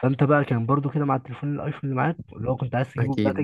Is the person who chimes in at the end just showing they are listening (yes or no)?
no